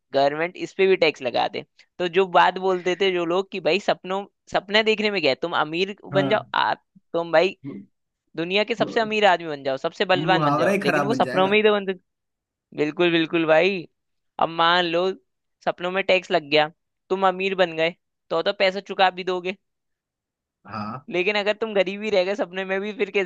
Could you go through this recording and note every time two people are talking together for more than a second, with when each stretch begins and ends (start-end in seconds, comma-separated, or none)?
10.1-11.6